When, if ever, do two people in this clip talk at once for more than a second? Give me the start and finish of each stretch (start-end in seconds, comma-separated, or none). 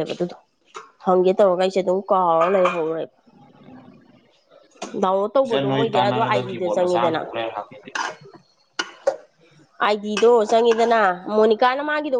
5.5-7.2